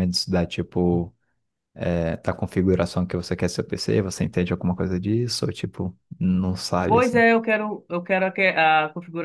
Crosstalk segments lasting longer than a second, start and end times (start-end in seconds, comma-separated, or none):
none